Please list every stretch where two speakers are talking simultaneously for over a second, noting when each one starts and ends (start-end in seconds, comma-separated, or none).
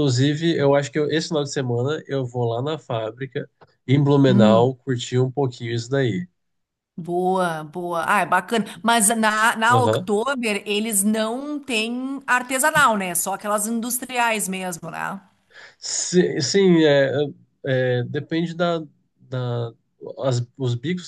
none